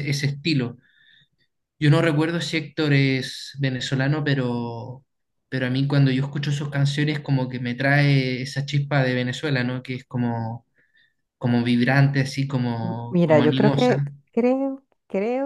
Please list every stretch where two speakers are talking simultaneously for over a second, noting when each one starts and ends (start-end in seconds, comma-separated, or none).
12.8-14.1